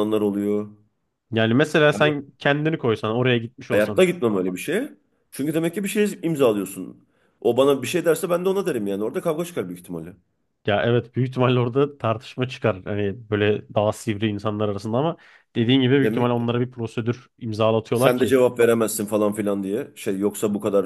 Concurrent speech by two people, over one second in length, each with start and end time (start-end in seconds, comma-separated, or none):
none